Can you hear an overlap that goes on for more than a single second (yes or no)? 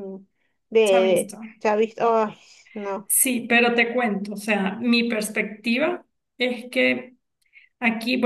no